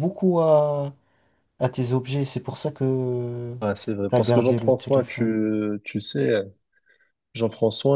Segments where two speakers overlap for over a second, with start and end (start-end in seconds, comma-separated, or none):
4.1-5.3